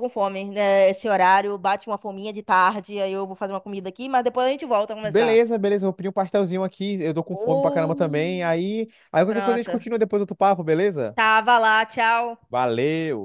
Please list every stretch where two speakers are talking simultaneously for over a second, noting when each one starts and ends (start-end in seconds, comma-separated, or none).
7.3-8.5